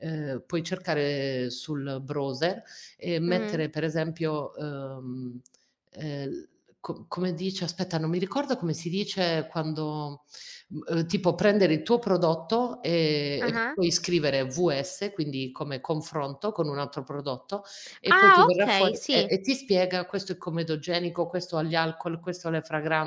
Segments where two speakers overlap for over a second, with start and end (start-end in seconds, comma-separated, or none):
18.1-19.3